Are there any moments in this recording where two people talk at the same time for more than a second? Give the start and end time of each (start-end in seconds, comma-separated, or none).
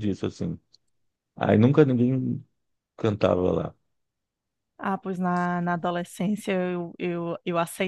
none